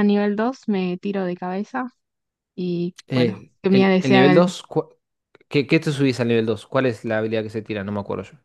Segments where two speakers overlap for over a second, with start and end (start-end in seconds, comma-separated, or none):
3.1-4.5